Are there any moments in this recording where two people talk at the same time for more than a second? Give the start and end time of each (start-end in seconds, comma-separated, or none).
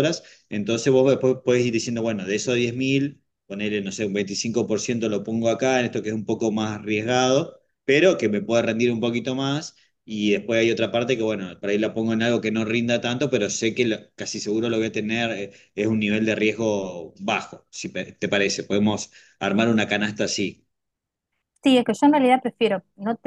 none